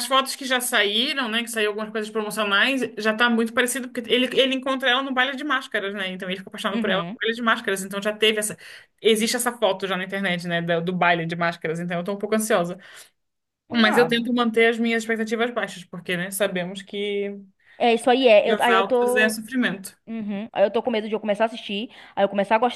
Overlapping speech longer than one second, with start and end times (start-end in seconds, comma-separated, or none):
17.9-19.4